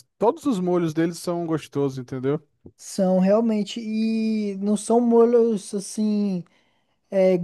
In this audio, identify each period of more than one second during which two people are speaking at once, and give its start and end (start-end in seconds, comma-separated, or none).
none